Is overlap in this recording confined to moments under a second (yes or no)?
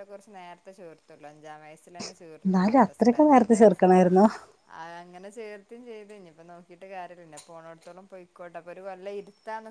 no